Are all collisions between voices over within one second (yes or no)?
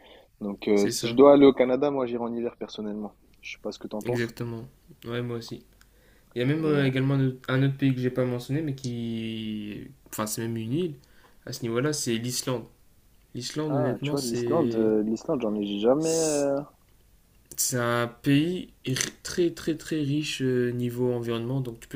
no